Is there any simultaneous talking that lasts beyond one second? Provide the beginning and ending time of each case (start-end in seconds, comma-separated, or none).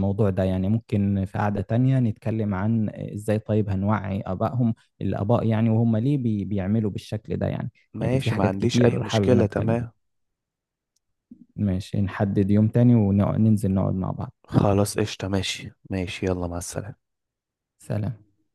7.9-9.8